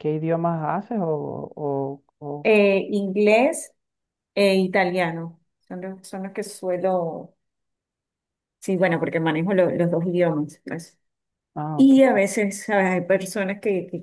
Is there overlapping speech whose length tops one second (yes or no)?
no